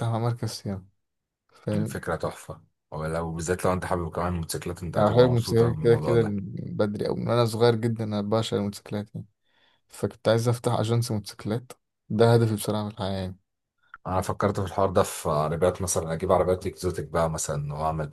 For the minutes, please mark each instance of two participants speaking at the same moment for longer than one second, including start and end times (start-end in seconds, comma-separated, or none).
5.0-6.3